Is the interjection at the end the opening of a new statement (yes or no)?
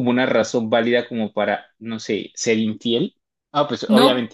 no